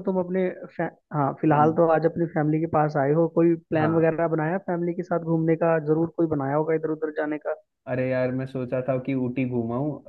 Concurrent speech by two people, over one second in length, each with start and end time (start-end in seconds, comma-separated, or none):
none